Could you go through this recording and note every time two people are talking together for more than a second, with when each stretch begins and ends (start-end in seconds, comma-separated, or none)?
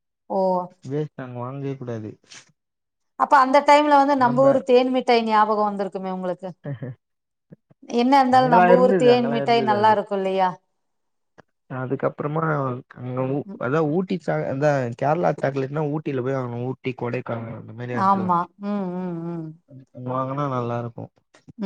8.4-9.9